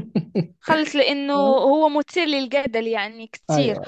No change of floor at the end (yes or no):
yes